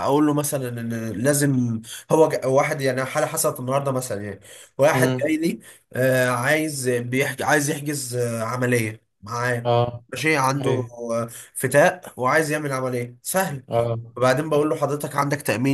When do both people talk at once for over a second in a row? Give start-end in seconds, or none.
none